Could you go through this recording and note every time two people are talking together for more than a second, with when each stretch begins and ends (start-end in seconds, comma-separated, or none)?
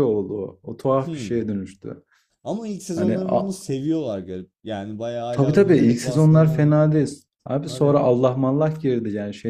5.3-6.7